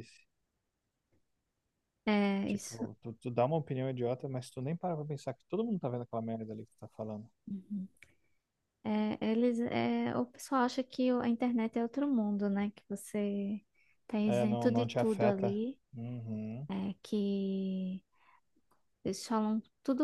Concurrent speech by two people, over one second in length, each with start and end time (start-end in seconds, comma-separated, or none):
14.2-15.5